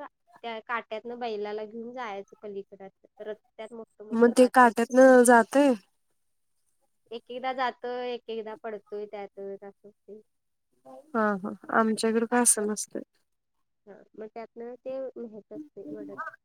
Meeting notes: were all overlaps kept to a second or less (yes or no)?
yes